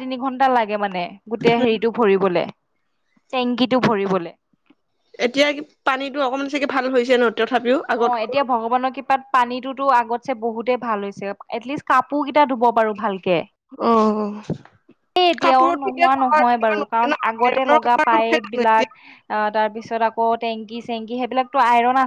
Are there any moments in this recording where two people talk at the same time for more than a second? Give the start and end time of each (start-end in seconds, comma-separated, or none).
15.4-18.9